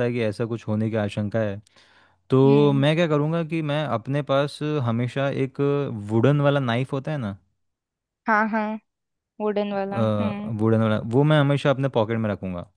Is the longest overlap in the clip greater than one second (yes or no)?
no